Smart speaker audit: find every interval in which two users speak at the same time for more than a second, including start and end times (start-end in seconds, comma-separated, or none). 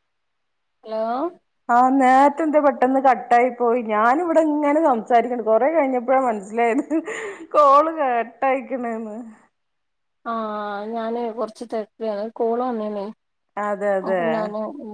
none